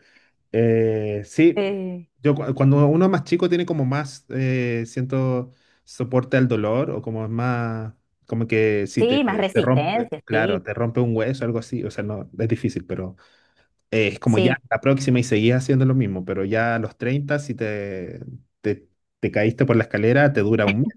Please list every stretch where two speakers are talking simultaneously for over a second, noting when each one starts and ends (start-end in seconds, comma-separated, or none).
9.0-10.6